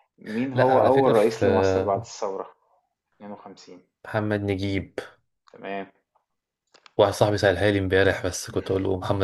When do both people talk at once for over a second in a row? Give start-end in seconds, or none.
0.5-2.2